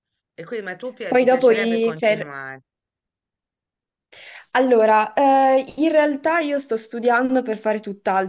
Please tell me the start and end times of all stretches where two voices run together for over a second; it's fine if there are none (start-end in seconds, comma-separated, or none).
1.1-2.4